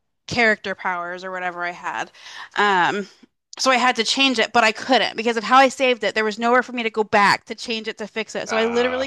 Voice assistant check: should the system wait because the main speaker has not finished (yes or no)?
yes